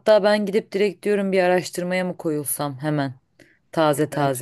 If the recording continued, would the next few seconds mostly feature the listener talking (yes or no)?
yes